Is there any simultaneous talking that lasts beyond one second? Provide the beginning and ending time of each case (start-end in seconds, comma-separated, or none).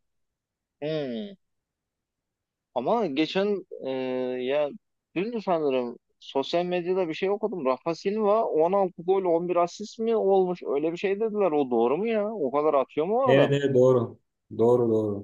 none